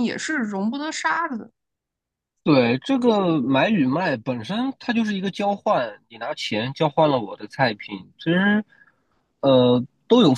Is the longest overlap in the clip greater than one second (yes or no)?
no